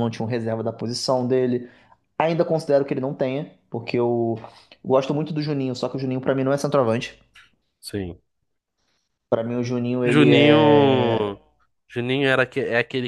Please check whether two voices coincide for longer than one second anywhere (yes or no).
yes